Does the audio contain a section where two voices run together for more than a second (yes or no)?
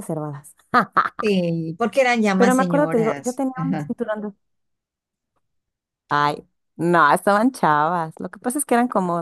yes